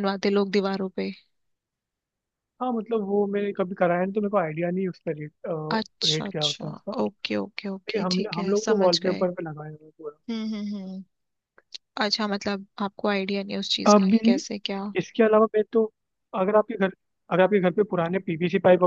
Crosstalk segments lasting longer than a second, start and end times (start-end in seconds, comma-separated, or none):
7.5-9.3